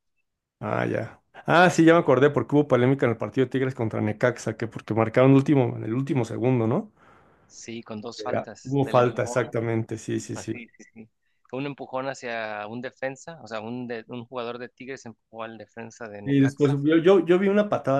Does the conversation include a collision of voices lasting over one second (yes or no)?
yes